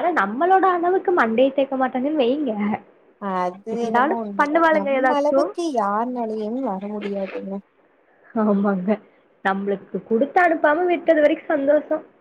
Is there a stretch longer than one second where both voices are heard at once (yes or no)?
yes